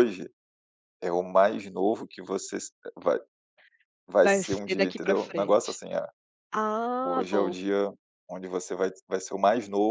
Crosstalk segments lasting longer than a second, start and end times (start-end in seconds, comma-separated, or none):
4.2-5.8